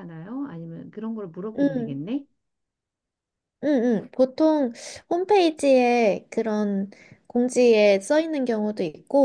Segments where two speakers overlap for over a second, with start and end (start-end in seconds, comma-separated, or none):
none